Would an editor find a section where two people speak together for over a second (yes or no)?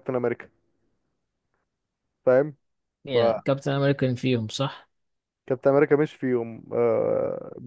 no